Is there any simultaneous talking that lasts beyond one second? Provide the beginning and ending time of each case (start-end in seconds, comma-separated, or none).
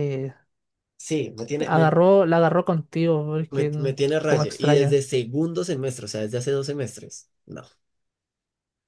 3.5-5.0